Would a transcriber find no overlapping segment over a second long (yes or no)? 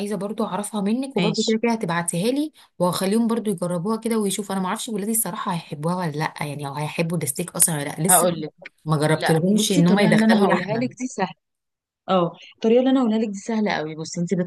no